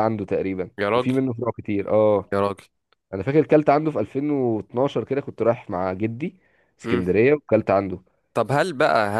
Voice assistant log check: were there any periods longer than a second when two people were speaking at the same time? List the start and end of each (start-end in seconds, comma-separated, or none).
none